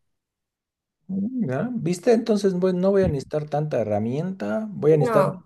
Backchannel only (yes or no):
yes